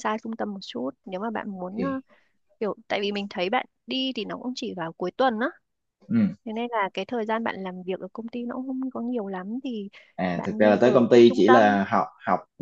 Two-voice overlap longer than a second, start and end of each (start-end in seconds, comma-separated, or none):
10.3-11.8